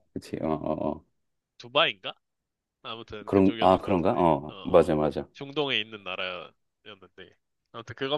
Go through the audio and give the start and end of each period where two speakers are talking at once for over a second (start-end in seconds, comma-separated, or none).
3.3-4.9